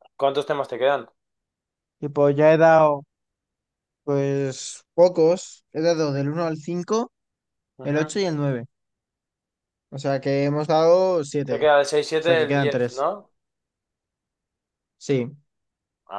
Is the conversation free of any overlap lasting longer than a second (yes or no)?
no